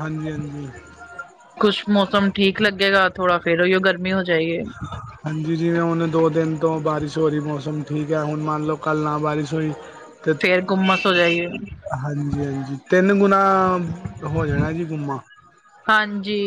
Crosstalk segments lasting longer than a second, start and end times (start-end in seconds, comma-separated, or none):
none